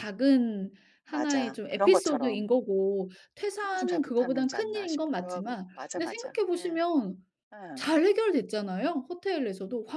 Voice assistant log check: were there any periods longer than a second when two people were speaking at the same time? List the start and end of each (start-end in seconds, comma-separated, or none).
1.1-2.5, 3.5-6.8